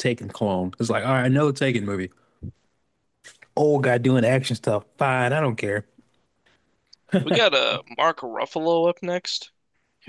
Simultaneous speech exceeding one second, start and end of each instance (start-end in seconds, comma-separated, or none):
none